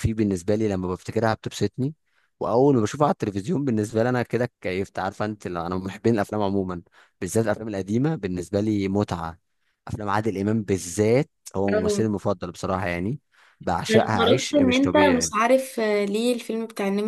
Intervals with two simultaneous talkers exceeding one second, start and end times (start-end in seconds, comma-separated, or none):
13.9-15.3